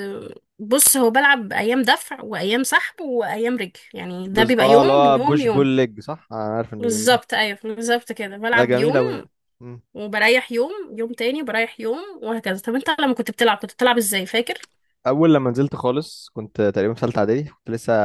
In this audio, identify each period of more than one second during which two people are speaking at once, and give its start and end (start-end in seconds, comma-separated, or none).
4.3-5.7